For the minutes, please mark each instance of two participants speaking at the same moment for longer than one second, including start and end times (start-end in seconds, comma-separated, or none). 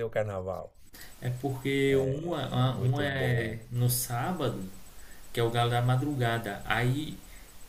2.3-3.6